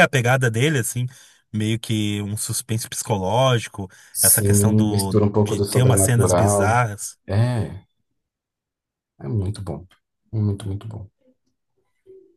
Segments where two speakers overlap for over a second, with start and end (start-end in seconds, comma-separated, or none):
4.1-6.8